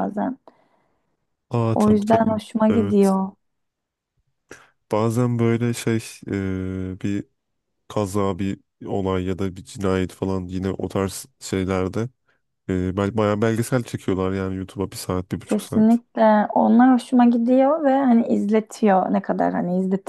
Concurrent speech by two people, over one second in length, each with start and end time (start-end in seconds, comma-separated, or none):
1.7-3.1